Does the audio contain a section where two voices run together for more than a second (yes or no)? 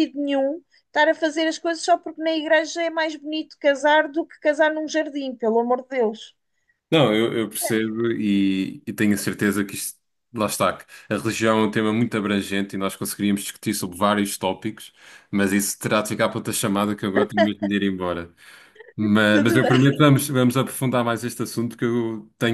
no